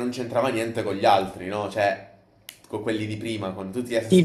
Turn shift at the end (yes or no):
yes